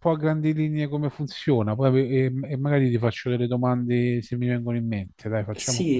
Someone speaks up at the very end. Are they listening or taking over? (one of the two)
taking over